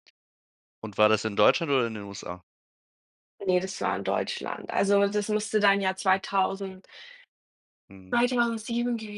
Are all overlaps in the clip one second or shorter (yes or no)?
yes